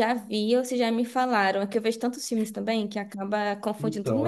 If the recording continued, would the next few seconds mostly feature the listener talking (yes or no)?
yes